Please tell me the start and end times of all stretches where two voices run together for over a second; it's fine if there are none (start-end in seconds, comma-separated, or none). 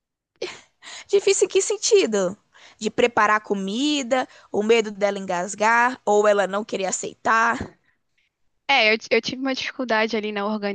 none